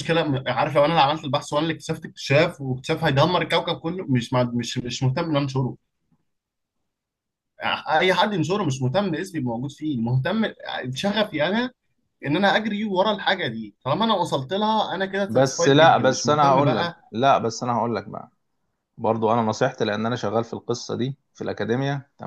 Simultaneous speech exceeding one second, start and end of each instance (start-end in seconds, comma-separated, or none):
15.3-17.0